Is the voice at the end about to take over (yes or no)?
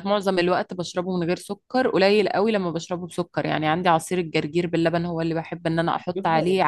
no